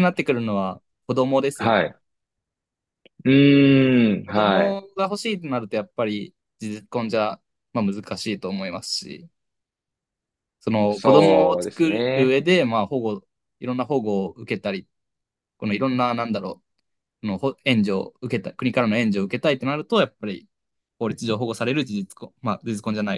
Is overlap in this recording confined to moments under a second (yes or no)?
no